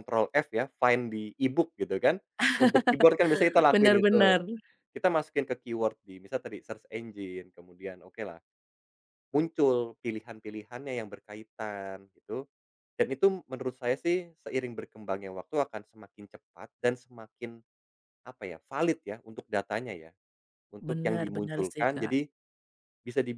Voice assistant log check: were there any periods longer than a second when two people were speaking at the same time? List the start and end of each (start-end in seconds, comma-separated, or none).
20.8-22.1